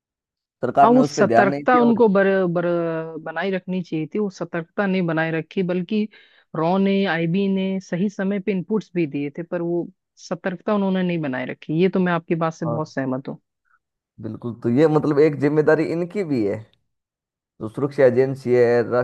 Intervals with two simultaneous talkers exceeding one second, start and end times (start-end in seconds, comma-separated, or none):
0.8-2.0